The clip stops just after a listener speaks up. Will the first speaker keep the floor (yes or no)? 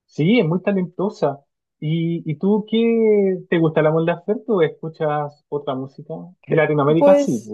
no